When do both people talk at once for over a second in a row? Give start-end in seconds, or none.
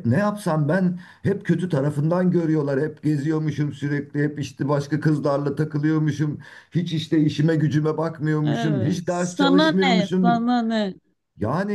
8.4-10.4